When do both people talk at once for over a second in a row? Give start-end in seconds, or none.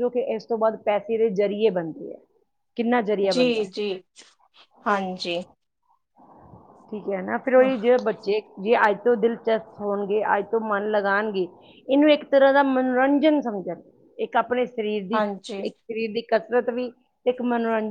none